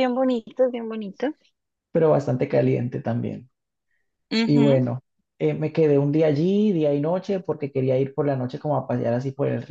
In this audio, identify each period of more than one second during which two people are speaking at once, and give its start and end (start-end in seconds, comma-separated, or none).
none